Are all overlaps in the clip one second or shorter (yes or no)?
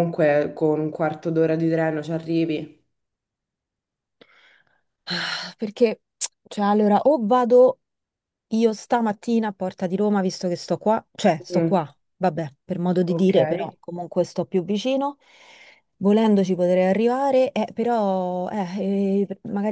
yes